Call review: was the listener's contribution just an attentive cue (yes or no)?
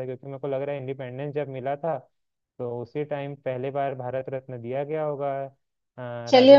no